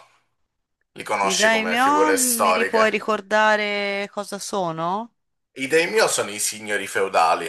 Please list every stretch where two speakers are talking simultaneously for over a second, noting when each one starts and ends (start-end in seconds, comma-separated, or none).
1.2-2.9